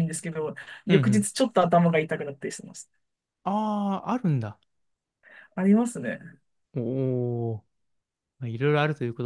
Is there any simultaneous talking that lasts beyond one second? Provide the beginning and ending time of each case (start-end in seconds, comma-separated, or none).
none